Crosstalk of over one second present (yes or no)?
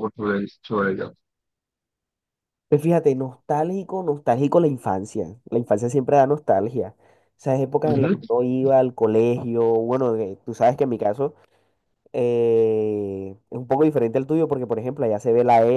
no